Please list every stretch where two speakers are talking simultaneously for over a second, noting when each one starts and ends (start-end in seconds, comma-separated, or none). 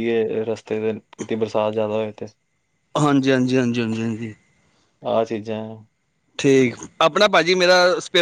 none